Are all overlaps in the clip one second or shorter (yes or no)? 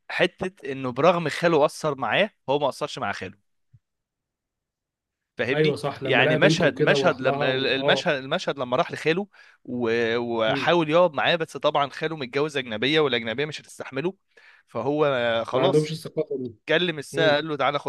no